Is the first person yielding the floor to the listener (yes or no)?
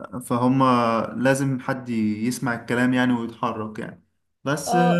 no